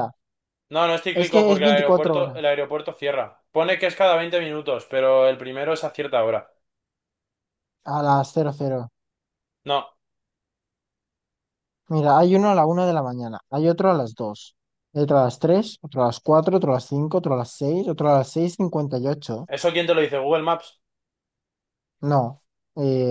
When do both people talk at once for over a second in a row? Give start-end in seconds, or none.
1.1-2.5